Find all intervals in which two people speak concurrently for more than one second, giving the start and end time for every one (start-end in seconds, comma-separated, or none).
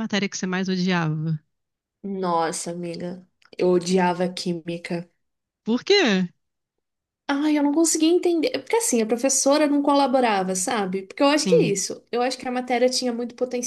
none